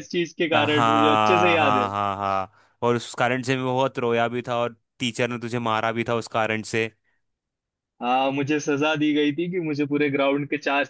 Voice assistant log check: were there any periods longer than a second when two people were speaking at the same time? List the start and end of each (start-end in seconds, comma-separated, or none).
0.5-1.9